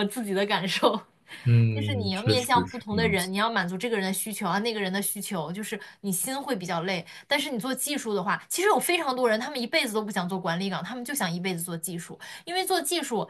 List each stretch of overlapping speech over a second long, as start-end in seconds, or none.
1.7-3.3